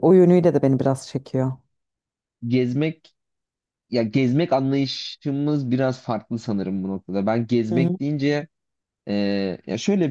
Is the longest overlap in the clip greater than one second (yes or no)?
no